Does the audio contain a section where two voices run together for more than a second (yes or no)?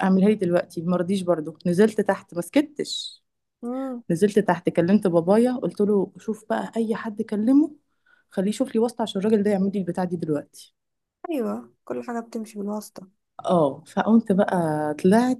no